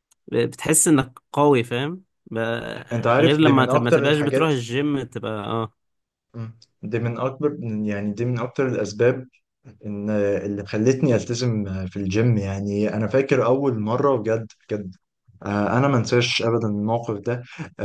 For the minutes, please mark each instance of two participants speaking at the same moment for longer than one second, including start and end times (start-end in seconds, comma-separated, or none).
3.2-4.5